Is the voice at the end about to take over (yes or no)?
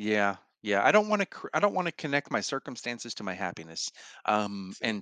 no